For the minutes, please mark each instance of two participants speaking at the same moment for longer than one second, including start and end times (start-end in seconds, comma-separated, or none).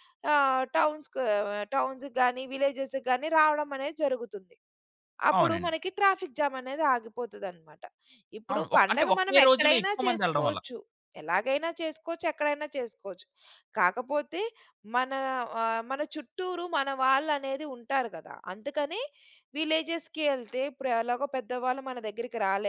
8.5-10.6